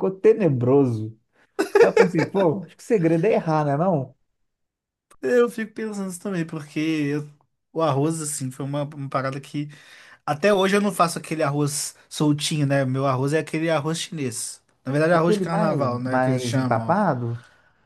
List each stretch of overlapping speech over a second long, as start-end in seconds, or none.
15.1-17.0